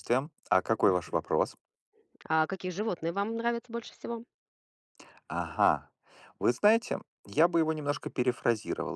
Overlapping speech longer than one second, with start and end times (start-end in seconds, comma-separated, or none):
none